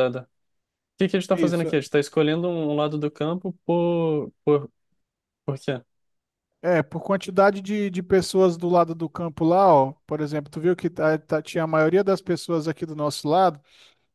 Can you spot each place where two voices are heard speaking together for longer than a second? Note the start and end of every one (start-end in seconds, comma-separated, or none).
none